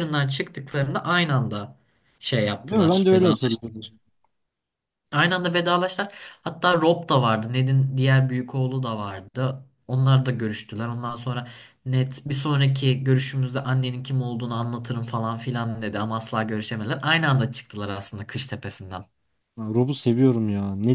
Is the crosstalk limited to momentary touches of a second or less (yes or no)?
no